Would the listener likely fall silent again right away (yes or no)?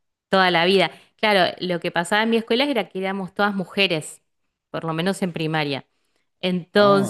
yes